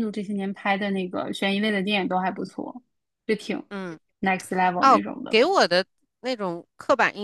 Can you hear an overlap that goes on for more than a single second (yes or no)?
no